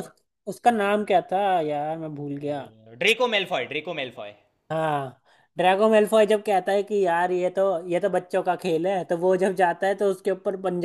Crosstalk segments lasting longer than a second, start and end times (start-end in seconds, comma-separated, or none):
none